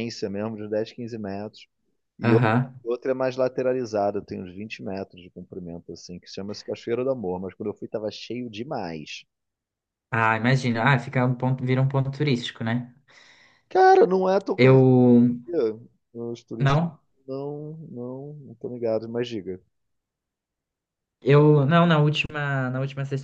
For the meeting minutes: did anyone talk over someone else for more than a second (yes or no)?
no